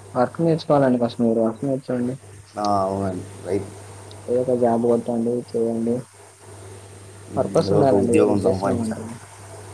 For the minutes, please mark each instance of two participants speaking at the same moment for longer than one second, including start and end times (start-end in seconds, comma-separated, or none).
7.3-9.1